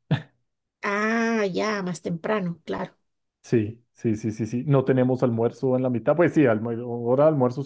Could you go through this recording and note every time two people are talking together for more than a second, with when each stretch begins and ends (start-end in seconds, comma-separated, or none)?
none